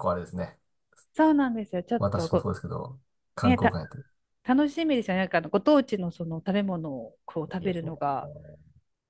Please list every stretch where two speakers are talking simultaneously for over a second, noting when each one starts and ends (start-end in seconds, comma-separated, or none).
none